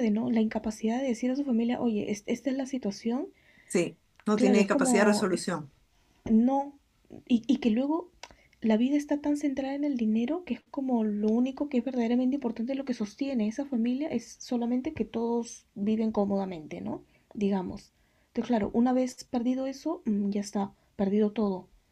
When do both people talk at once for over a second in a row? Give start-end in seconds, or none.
4.3-5.5